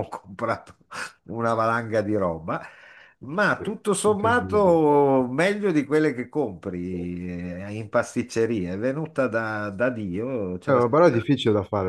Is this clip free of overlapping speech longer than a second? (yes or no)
no